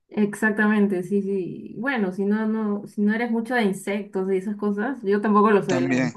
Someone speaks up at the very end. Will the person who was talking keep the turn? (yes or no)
yes